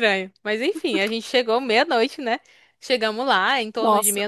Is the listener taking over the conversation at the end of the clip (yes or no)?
no